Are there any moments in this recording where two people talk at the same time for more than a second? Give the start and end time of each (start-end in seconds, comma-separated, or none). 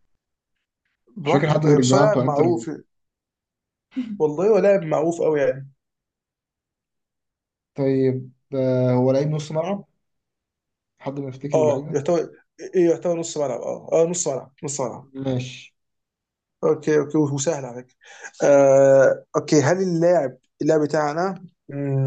1.2-2.7